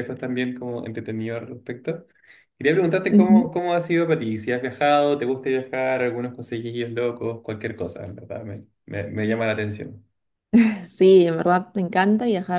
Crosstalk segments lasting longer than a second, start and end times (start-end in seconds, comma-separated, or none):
none